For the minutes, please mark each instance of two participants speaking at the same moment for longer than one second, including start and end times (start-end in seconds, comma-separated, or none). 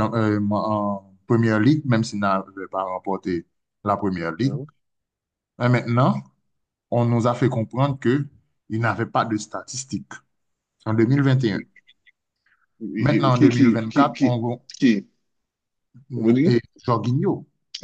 13.0-14.4